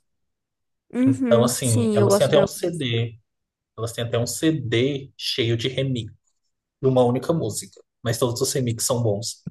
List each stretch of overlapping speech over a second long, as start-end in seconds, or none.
1.1-2.9